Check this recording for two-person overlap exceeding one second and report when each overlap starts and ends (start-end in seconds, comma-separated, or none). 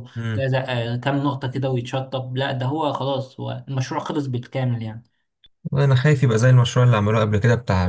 none